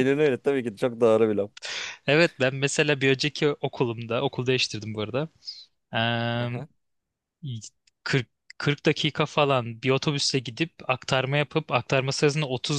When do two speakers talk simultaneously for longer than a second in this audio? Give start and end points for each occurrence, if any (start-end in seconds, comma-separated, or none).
none